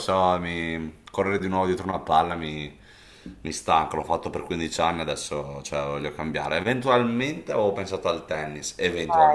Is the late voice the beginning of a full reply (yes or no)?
yes